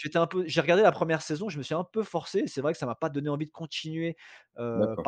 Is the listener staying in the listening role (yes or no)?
yes